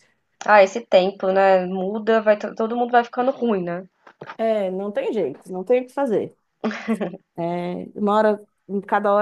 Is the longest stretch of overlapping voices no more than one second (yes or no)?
yes